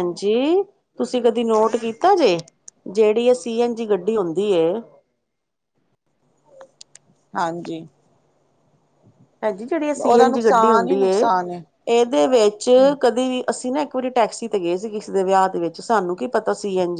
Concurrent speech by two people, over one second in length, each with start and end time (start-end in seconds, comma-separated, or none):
10.0-11.3